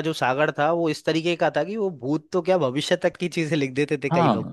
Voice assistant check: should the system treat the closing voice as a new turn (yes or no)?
yes